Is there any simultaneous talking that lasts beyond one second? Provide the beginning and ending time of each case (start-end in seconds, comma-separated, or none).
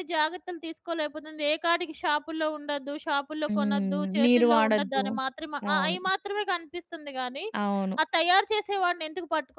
3.5-5.0